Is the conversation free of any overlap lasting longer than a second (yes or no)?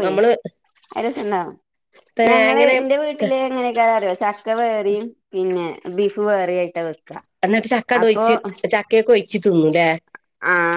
yes